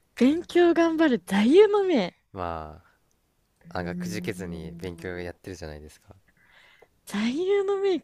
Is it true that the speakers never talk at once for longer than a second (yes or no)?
no